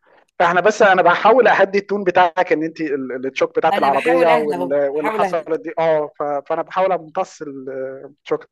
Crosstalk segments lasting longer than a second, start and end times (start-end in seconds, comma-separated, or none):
3.7-5.5